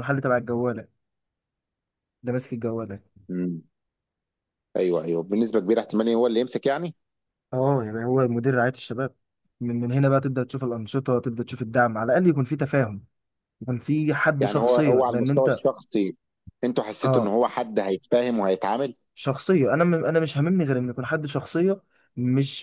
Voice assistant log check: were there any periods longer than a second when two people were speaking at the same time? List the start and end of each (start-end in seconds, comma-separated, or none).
14.4-15.6